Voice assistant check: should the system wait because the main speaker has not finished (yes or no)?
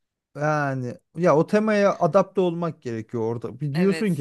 yes